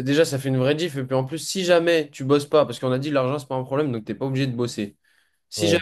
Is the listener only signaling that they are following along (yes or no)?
yes